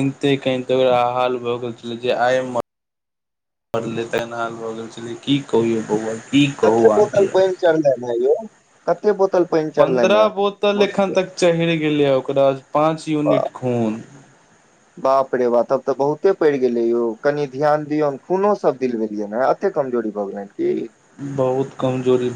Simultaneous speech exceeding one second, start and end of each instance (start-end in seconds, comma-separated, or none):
9.8-11.1